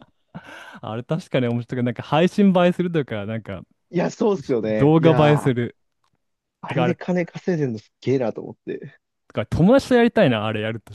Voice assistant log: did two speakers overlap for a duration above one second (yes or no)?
yes